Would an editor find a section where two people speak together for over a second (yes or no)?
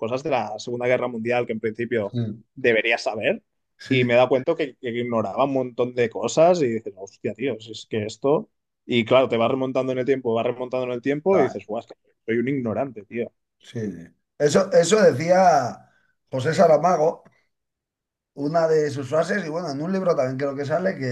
no